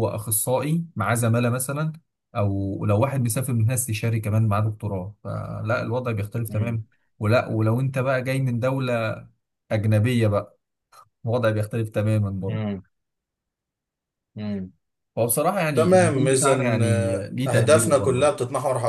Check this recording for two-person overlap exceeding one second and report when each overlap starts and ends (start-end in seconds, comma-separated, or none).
15.7-18.3